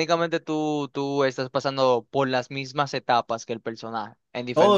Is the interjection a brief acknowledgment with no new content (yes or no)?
no